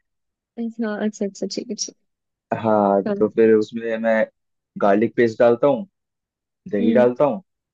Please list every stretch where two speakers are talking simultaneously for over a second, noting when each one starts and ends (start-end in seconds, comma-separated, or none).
none